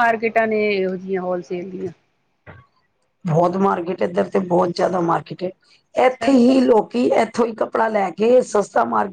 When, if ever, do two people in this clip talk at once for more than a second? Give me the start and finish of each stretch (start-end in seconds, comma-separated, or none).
none